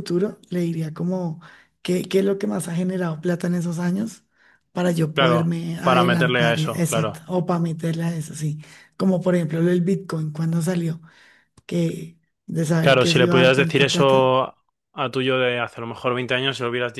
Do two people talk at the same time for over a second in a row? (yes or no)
yes